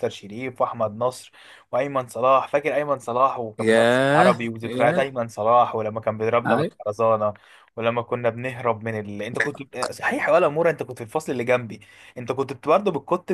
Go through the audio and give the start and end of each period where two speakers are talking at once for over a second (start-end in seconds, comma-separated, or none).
3.6-5.1